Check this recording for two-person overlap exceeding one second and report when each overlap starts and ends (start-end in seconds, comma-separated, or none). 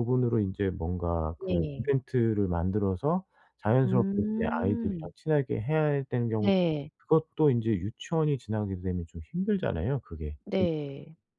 3.8-5.1